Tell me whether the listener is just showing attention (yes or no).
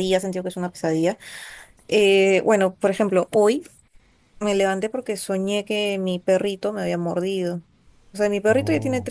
yes